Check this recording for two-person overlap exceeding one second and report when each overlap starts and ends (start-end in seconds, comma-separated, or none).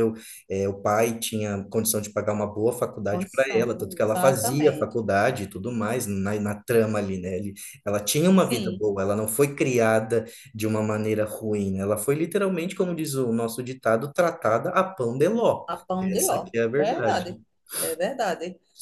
3.1-5.0, 15.7-17.4